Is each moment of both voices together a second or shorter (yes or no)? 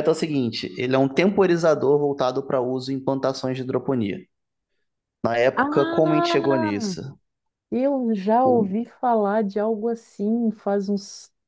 no